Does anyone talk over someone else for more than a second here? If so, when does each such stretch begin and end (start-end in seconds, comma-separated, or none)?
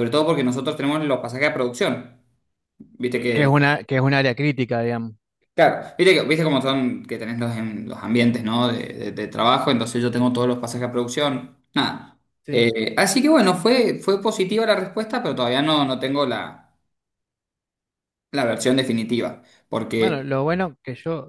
none